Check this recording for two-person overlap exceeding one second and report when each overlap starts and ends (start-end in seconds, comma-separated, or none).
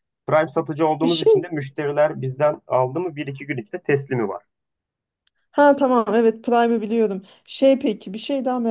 none